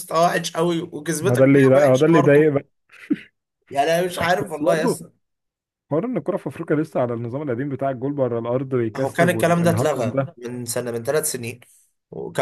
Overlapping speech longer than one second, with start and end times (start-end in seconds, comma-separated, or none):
1.2-2.5, 8.9-10.4